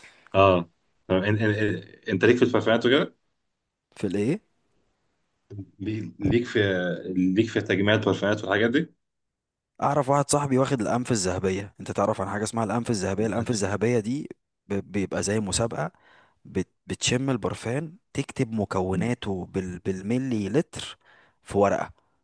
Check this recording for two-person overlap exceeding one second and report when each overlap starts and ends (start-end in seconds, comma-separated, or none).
none